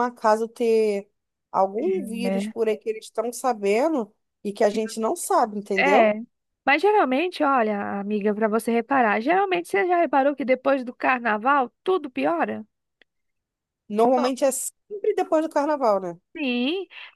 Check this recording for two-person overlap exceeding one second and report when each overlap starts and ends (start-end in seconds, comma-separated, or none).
none